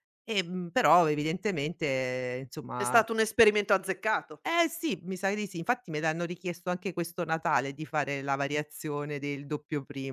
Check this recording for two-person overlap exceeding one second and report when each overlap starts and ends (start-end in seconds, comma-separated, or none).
none